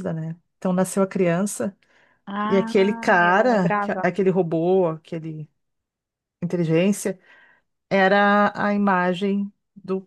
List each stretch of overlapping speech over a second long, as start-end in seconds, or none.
2.5-4.0